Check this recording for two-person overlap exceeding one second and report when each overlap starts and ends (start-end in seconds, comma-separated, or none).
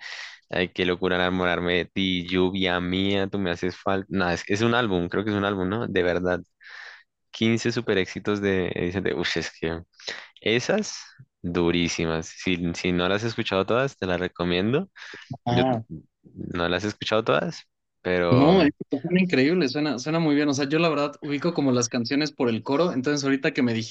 none